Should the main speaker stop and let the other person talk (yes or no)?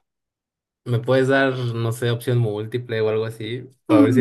yes